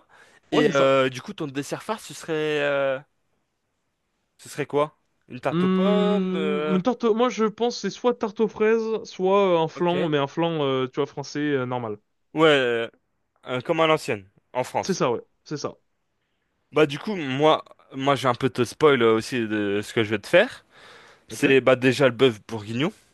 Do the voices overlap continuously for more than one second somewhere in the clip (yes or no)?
yes